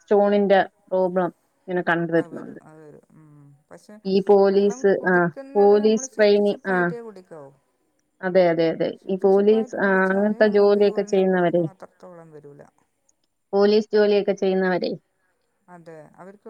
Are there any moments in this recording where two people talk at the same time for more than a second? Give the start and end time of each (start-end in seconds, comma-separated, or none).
4.5-6.9, 9.0-11.6